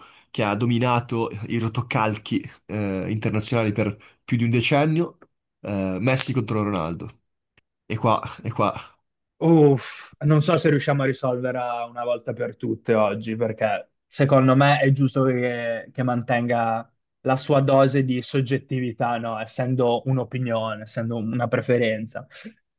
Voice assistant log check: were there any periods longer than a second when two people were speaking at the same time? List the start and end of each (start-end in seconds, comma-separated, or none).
none